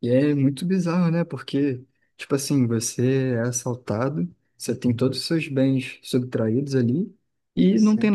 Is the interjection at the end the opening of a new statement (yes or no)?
no